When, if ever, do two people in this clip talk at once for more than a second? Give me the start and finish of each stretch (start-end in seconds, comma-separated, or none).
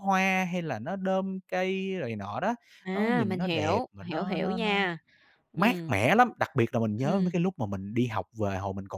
2.9-4.7